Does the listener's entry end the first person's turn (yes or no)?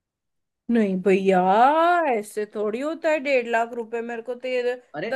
no